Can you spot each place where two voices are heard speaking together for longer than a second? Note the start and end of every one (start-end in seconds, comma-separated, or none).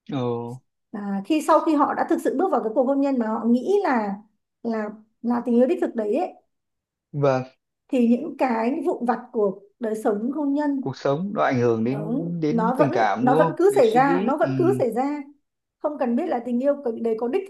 11.9-14.5